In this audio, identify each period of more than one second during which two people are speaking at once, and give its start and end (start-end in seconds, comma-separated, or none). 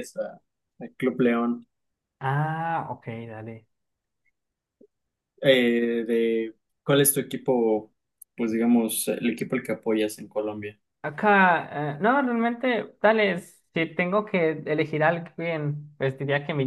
none